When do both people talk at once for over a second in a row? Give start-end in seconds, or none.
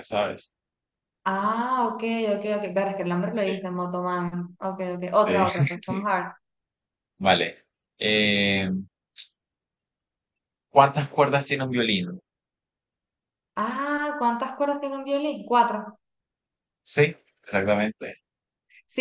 none